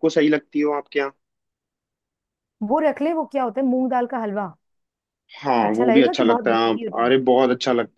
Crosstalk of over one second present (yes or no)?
yes